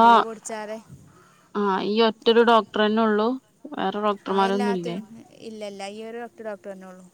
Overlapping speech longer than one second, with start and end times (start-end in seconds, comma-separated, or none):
none